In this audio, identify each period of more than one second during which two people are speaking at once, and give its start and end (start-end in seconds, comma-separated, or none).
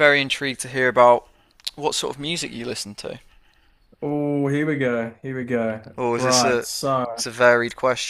none